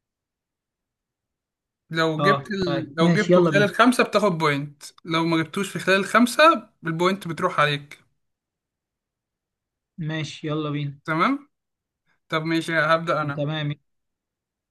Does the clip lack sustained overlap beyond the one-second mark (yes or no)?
no